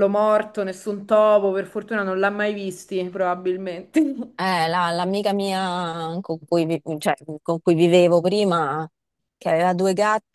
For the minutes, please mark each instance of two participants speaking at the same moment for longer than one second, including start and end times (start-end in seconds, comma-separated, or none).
none